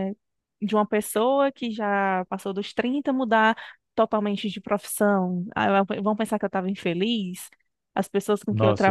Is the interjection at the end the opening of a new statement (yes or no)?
yes